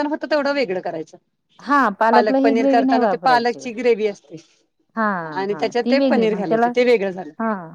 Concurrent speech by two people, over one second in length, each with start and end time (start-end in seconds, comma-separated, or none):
2.1-3.6